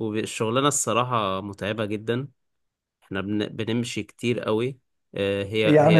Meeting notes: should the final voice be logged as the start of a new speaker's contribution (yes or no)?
yes